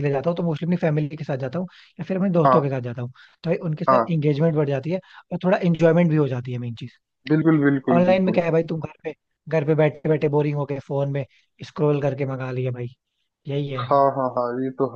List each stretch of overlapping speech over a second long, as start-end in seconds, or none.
none